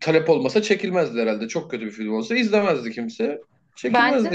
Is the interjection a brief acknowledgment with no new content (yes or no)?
no